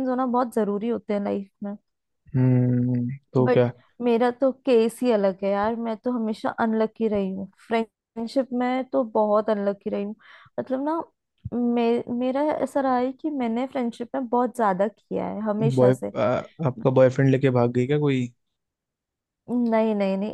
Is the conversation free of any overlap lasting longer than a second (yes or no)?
yes